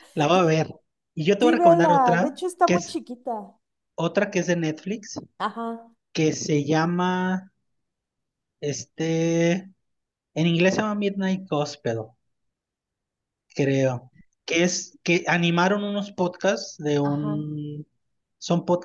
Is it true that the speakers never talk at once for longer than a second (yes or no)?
no